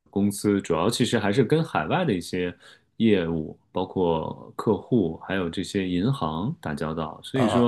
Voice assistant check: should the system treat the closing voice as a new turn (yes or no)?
no